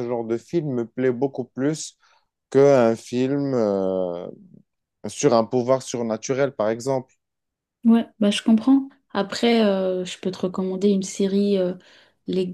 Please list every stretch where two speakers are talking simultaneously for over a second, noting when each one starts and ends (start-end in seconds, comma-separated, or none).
none